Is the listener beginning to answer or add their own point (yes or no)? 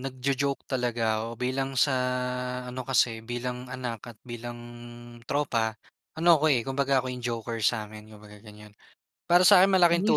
no